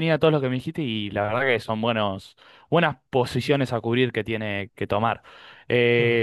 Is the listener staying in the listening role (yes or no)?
yes